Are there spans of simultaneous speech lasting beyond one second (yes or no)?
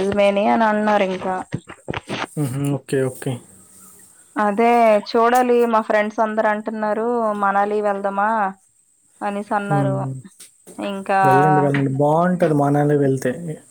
no